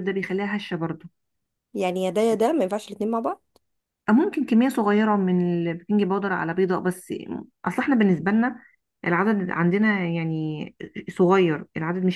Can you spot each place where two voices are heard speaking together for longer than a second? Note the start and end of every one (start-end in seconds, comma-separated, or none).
none